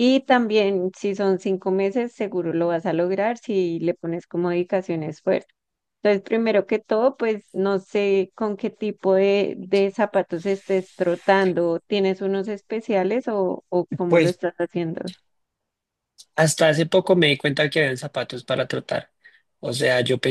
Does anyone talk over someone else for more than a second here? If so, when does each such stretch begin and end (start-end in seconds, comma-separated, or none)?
none